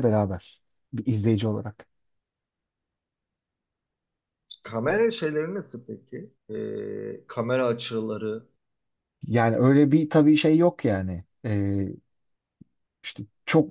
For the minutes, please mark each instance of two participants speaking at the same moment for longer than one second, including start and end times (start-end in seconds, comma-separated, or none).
none